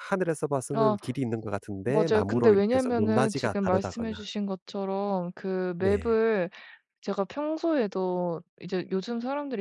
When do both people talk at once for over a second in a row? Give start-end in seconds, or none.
1.8-4.2